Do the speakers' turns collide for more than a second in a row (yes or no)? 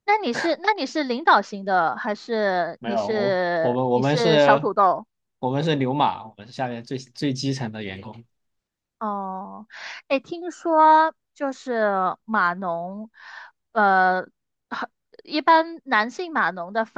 yes